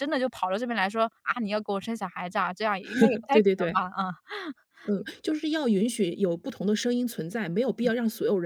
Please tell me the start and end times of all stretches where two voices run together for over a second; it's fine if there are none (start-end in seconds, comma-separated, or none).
none